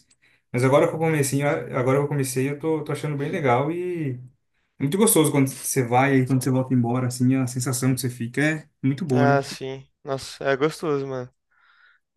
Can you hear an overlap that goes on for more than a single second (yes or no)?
no